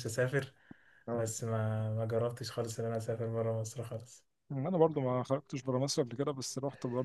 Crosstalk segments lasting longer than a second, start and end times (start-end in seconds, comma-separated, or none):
none